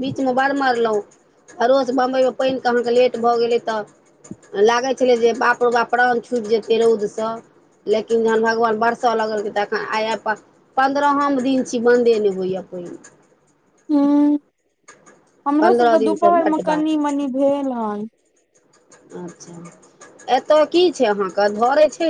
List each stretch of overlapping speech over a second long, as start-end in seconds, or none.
15.6-17.2